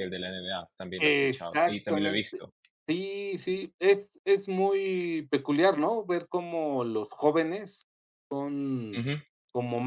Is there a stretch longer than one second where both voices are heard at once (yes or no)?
yes